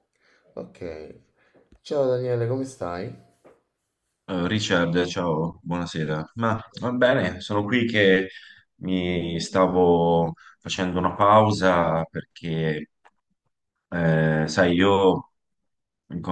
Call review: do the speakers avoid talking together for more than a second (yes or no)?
yes